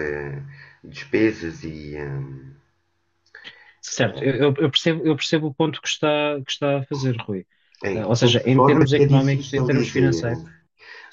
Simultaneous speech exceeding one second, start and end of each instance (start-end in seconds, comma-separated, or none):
7.9-10.2